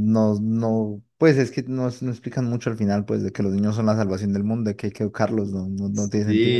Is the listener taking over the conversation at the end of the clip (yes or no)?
yes